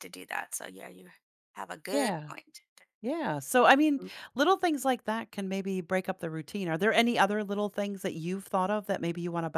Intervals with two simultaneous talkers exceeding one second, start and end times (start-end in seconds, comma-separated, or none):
none